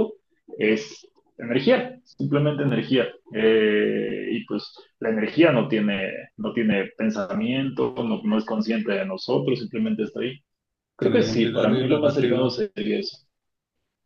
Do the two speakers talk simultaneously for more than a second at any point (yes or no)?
yes